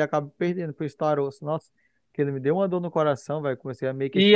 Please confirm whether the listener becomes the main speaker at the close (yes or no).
yes